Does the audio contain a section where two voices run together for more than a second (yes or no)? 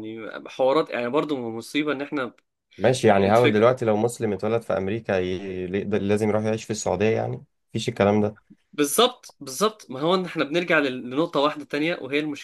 no